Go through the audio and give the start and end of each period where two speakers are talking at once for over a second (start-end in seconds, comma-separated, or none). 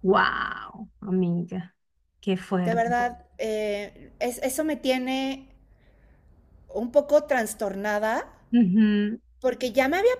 none